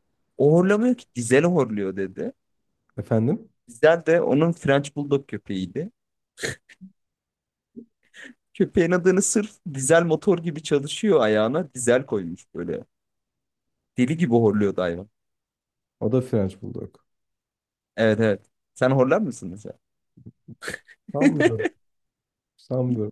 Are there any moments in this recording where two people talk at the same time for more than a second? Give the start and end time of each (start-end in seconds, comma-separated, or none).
none